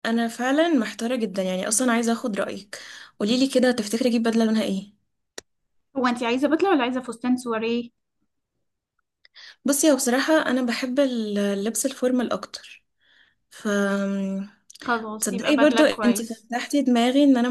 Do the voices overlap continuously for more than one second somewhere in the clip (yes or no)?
yes